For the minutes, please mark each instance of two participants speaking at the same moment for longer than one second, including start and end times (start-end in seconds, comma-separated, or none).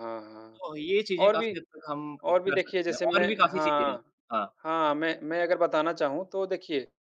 2.3-4.0